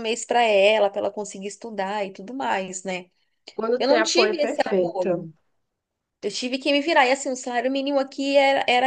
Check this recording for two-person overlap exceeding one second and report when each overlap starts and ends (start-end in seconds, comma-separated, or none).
3.8-5.3